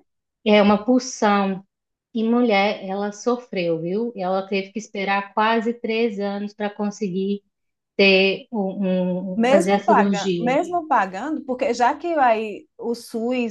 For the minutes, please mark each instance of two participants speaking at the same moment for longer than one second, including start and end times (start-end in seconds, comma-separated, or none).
9.3-10.6